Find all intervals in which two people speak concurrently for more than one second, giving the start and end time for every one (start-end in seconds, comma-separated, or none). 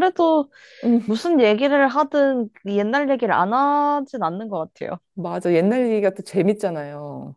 none